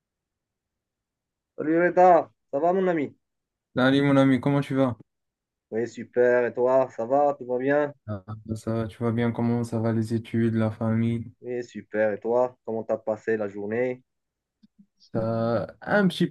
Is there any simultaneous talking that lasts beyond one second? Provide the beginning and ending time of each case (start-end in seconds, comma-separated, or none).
none